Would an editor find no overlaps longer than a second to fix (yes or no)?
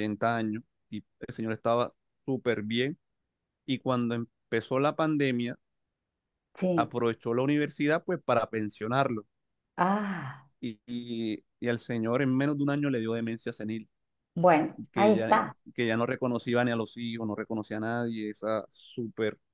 yes